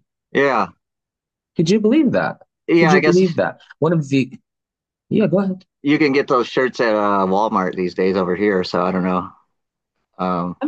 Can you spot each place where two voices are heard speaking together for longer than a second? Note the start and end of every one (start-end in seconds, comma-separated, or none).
none